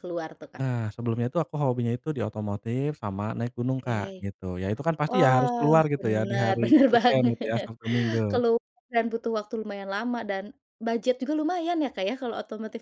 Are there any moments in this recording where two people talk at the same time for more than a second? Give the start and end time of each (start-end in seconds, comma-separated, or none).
5.1-7.7